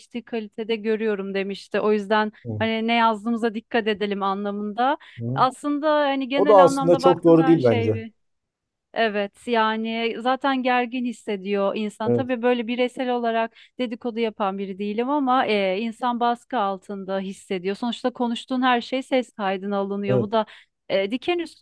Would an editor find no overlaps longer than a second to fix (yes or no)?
no